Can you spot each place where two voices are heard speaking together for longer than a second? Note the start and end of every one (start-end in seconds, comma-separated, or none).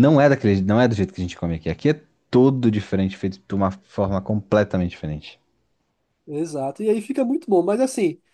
none